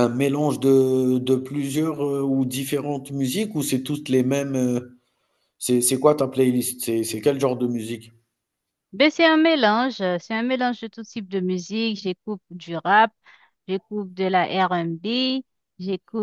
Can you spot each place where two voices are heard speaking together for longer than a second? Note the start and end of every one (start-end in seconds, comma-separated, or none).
none